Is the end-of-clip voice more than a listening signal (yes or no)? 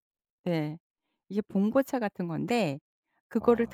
no